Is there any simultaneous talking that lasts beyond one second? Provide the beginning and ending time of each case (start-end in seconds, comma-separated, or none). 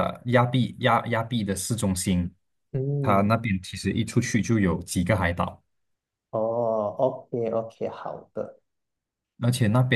none